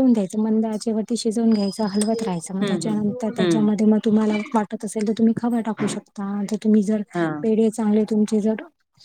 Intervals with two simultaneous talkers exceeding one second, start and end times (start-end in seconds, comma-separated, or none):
2.2-3.7